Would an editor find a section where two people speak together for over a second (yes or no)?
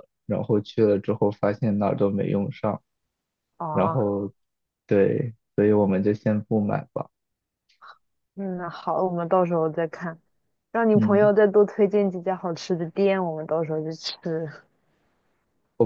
no